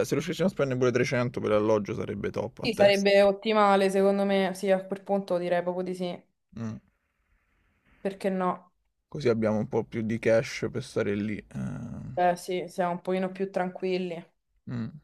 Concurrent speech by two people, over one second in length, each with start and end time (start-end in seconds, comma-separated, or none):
none